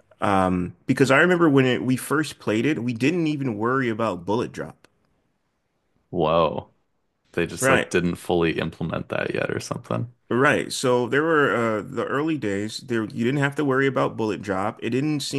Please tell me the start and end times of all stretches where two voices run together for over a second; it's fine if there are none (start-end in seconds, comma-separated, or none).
none